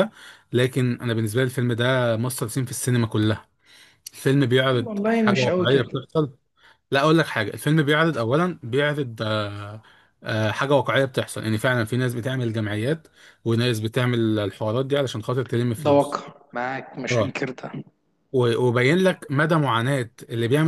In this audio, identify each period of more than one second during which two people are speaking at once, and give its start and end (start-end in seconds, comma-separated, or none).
4.7-6.0